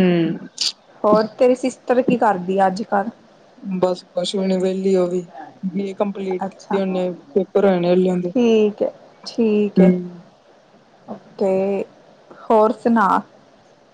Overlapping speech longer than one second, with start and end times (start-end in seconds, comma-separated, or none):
none